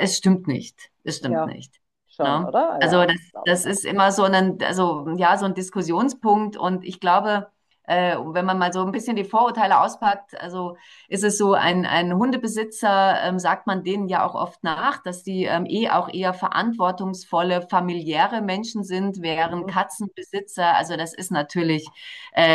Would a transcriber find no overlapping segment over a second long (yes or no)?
no